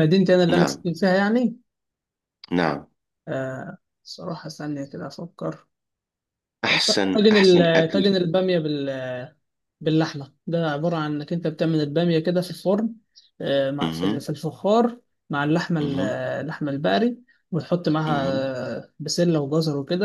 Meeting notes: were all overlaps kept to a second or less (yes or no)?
no